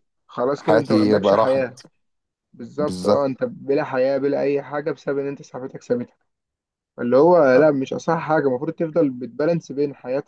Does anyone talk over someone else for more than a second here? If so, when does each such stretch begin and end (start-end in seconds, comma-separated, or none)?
0.6-1.8